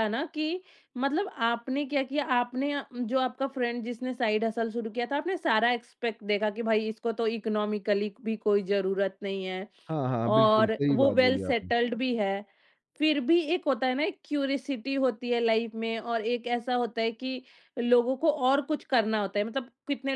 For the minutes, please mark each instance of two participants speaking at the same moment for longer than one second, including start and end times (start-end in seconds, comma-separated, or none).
10.3-11.7